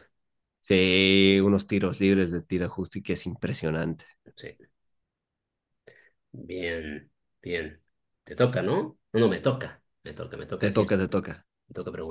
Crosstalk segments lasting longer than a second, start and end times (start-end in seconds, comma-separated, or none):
none